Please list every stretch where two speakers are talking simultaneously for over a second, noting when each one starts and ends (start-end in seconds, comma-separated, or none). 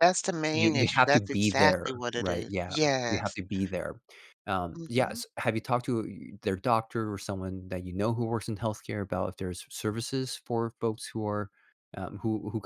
0.5-3.4